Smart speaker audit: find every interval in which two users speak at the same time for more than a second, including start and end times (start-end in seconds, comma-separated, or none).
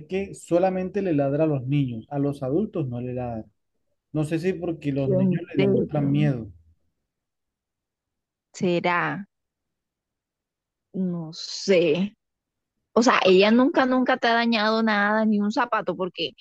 5.0-6.3